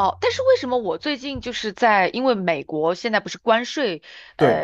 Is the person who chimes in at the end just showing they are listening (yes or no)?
yes